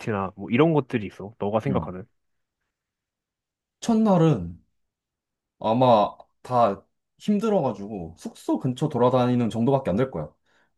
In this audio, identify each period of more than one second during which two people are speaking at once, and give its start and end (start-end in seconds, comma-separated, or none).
none